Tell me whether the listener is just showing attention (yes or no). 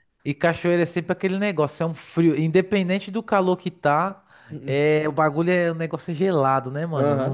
no